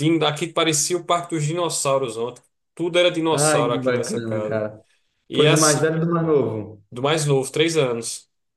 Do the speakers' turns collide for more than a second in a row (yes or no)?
yes